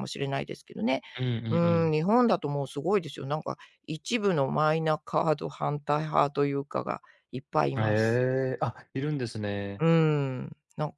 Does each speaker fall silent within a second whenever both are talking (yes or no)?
yes